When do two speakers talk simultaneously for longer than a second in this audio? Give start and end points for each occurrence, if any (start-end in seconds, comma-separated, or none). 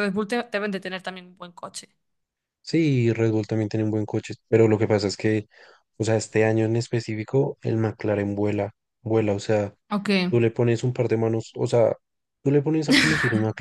none